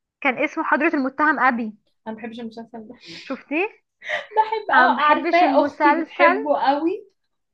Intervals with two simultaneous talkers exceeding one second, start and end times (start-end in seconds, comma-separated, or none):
4.7-6.4